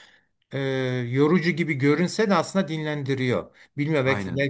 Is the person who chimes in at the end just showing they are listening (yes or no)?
yes